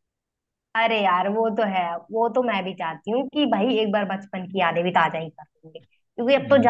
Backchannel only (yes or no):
yes